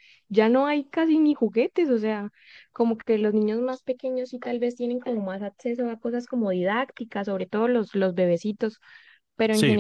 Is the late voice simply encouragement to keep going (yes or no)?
yes